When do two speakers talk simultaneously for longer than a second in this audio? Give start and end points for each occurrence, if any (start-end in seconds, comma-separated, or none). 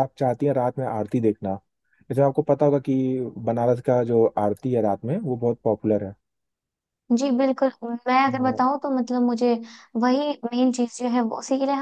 none